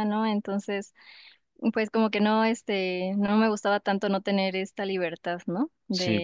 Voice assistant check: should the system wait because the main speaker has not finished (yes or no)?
yes